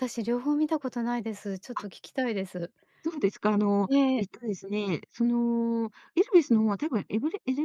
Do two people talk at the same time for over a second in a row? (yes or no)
no